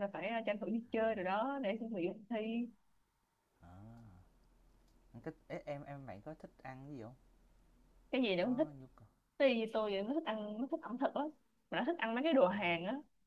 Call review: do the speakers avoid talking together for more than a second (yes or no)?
yes